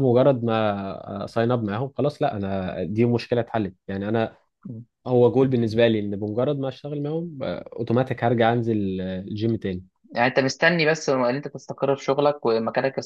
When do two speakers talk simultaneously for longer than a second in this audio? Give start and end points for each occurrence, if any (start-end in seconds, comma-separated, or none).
none